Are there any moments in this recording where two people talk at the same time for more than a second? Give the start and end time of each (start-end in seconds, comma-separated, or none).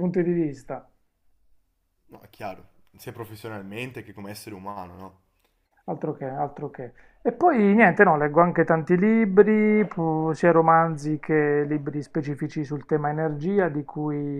none